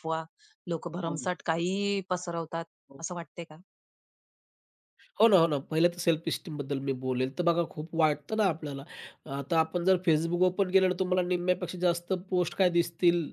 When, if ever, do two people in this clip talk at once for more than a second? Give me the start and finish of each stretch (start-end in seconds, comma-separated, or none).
none